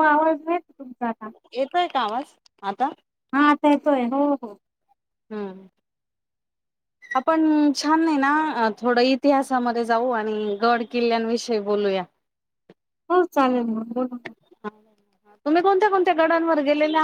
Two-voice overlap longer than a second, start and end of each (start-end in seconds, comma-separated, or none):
none